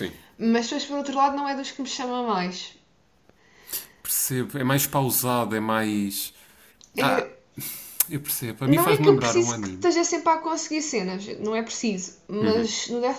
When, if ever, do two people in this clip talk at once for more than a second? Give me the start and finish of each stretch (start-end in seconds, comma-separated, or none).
8.7-9.9